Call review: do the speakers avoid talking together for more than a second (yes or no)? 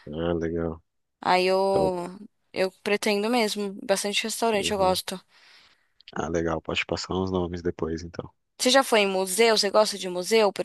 yes